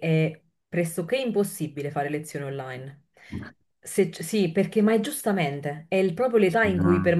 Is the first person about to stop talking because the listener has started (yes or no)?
no